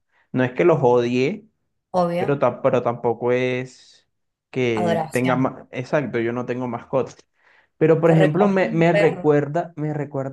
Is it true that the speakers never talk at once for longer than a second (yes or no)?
no